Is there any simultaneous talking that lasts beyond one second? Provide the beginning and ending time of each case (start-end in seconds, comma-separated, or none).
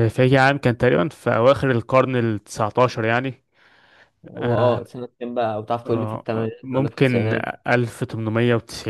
5.8-7.5